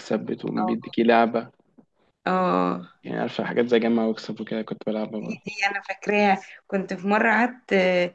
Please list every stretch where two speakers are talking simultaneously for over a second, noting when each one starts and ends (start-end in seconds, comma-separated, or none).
none